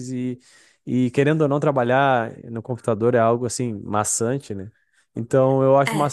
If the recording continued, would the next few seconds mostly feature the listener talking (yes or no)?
no